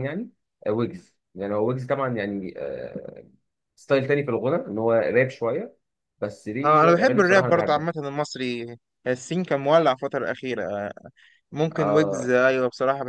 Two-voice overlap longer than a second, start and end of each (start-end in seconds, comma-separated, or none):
6.6-7.9